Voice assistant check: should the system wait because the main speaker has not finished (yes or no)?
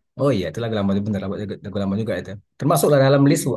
yes